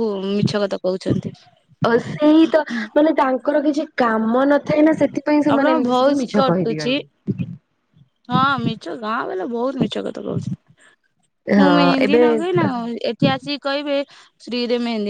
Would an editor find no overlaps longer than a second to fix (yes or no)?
no